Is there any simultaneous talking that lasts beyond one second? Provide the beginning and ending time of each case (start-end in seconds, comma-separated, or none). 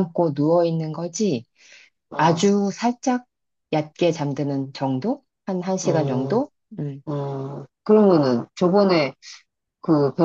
none